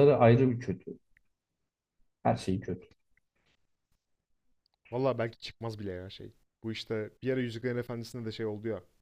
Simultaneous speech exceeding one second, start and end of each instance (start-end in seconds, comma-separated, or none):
none